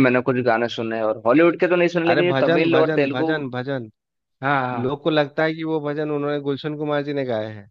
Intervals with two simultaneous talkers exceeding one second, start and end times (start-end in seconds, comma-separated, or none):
2.1-3.3